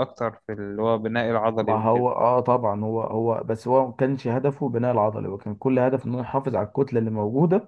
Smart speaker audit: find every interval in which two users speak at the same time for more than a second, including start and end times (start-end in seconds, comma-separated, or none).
none